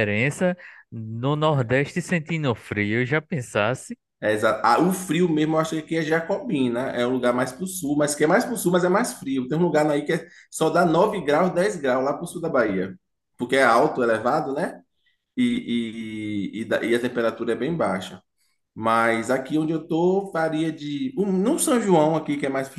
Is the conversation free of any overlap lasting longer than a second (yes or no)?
yes